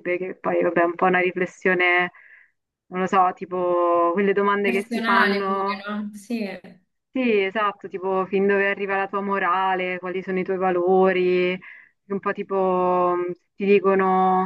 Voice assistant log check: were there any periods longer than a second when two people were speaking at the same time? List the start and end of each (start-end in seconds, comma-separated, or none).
4.6-5.9